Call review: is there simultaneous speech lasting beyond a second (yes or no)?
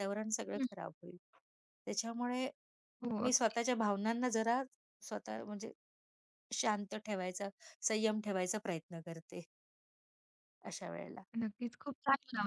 no